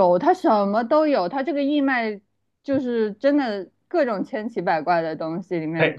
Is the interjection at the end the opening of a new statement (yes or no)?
yes